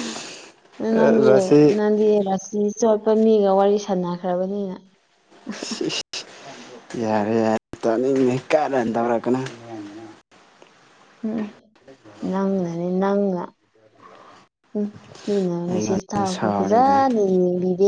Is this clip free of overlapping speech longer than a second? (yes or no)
no